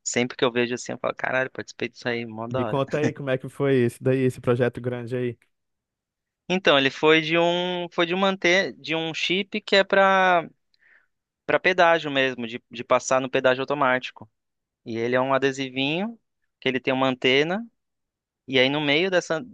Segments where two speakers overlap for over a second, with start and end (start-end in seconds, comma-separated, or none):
none